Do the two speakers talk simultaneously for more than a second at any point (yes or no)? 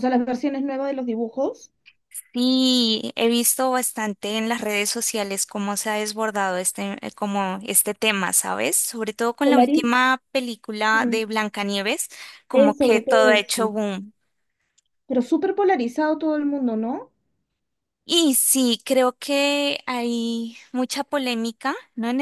yes